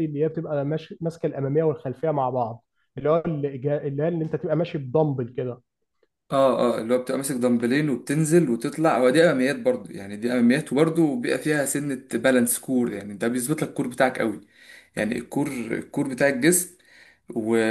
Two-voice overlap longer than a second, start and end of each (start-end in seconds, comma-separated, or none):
none